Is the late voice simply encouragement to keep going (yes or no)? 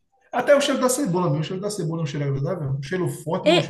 no